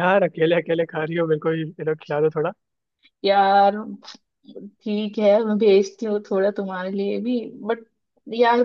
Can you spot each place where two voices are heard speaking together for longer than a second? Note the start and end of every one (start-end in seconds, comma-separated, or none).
none